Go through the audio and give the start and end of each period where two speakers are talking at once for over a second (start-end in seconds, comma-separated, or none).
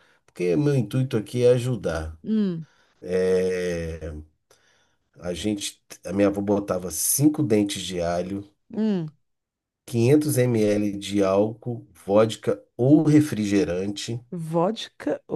none